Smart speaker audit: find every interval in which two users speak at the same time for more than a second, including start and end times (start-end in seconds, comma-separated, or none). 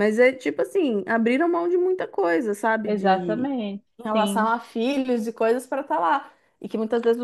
none